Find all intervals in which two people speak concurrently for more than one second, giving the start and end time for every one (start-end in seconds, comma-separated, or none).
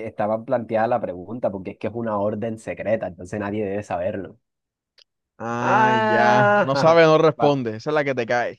5.6-7.5